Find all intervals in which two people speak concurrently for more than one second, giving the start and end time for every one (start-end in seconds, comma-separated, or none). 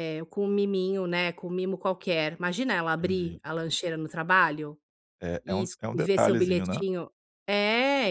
5.4-6.8